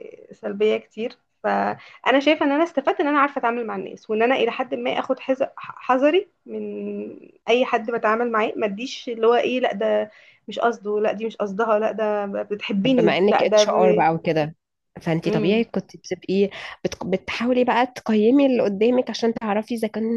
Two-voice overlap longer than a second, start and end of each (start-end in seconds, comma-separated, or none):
12.8-14.1